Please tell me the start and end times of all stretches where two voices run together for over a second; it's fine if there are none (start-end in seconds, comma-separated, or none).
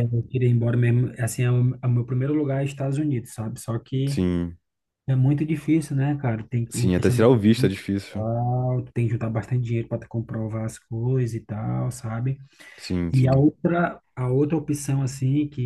6.7-8.3